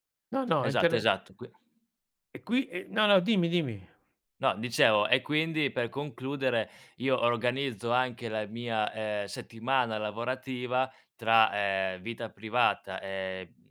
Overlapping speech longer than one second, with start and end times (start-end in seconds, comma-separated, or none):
none